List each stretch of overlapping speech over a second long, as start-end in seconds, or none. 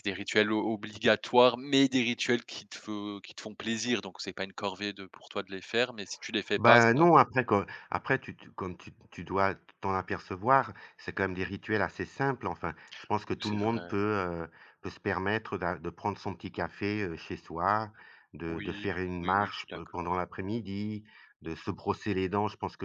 18.5-20.2